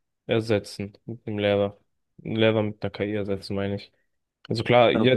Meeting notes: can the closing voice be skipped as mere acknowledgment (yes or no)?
no